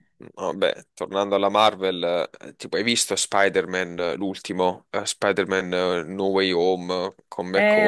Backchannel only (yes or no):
no